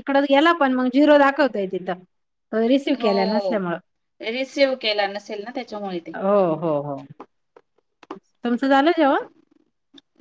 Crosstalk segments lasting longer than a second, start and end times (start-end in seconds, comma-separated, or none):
none